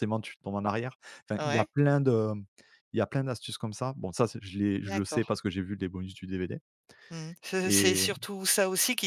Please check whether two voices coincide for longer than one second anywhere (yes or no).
no